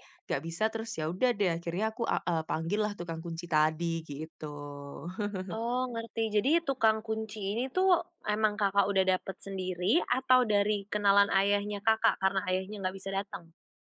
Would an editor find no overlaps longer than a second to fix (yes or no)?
yes